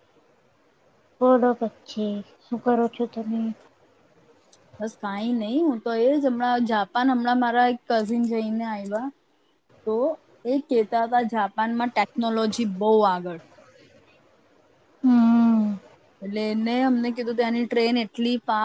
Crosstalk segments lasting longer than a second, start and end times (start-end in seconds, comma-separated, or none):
none